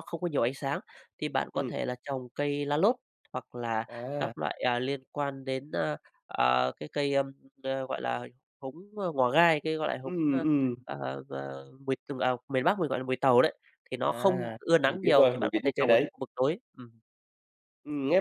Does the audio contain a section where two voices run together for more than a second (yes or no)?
yes